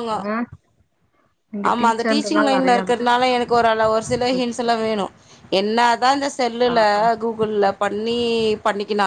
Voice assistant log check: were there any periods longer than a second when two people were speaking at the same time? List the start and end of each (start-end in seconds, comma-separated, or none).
1.7-3.2